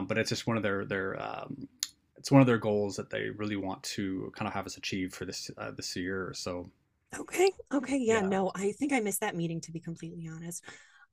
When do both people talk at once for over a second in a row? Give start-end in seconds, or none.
none